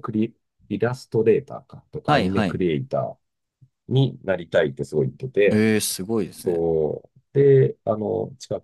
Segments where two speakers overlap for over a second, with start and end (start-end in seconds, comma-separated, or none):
none